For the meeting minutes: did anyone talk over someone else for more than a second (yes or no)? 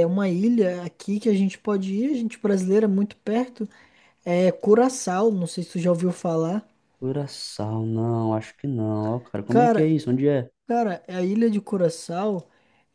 no